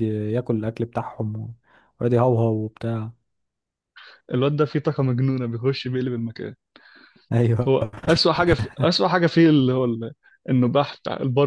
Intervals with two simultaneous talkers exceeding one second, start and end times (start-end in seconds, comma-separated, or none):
none